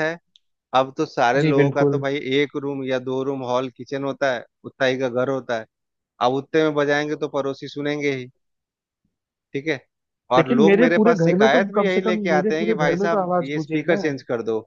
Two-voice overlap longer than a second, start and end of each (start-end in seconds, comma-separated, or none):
10.4-14.0